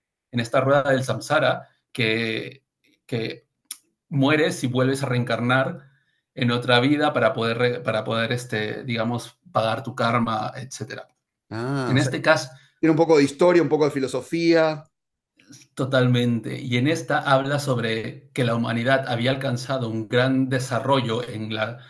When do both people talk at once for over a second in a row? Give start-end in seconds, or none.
none